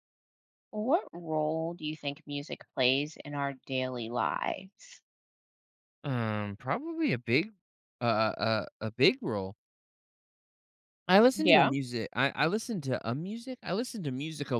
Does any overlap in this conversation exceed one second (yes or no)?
no